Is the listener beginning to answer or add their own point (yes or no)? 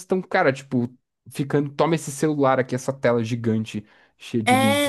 yes